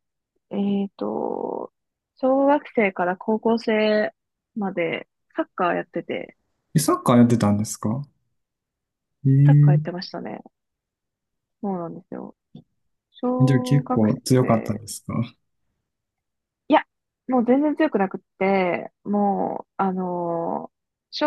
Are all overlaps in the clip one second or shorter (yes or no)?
no